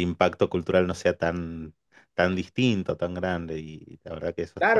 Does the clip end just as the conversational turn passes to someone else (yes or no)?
yes